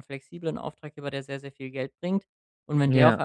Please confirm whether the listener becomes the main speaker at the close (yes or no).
no